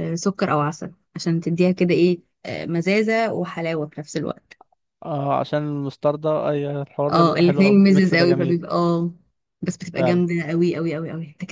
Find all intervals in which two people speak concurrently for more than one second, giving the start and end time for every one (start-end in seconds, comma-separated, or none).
7.1-8.6